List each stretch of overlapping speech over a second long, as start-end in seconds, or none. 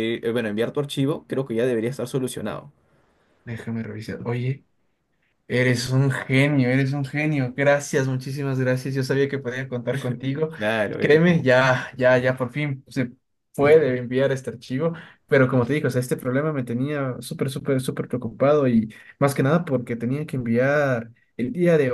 none